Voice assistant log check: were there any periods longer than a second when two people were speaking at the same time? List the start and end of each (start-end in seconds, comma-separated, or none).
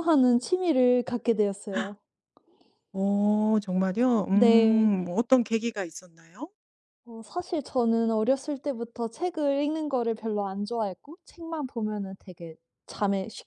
none